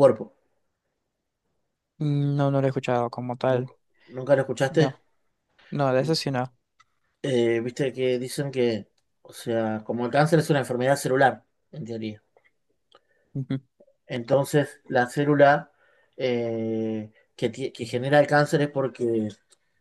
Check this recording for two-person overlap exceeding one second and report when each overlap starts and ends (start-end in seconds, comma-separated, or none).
none